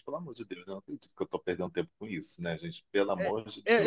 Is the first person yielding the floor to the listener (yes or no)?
yes